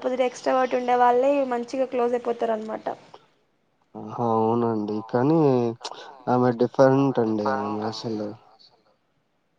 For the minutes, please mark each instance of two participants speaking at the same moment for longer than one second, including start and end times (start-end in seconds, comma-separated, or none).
none